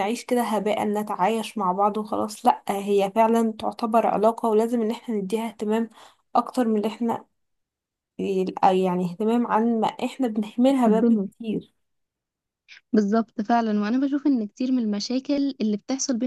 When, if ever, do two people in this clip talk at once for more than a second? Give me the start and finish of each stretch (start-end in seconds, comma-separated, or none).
none